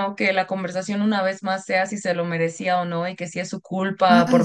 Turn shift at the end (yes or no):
no